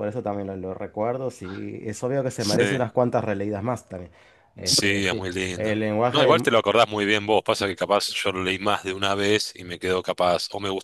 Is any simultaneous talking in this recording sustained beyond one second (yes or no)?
yes